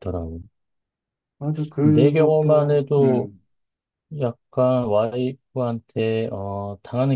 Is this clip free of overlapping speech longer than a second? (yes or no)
no